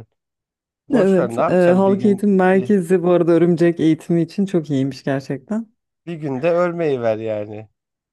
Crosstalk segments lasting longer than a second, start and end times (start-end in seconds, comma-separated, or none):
0.9-2.7